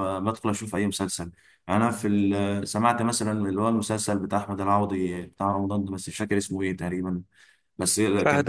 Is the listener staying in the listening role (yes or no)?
yes